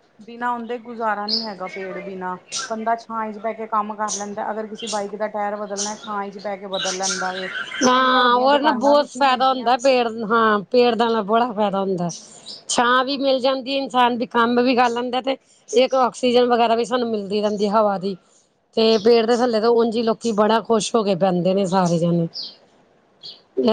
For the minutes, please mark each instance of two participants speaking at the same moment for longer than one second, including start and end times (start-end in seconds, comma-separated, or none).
7.8-9.7